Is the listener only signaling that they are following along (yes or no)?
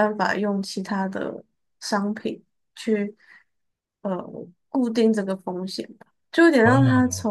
yes